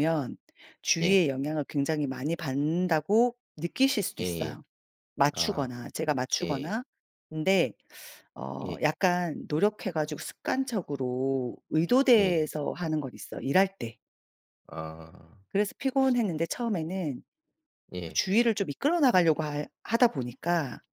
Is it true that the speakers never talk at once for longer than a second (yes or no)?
yes